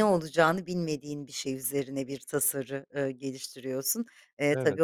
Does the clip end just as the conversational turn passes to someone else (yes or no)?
no